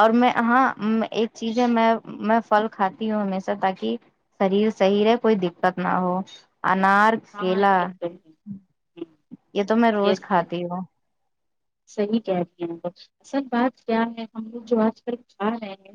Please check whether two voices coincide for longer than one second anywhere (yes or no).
no